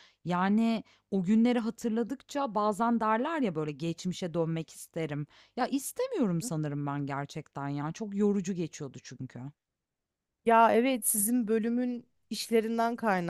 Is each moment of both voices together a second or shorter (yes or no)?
yes